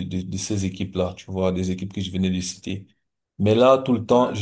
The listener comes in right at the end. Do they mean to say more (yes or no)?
no